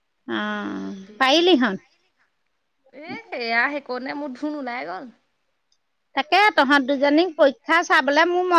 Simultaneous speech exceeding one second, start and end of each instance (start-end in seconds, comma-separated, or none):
none